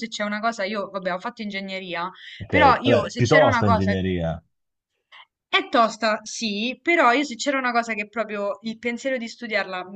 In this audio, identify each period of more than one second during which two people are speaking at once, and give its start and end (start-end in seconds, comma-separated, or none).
2.5-3.9